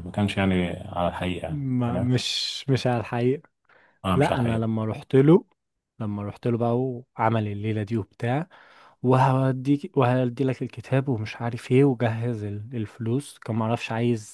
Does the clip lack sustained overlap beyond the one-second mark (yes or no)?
yes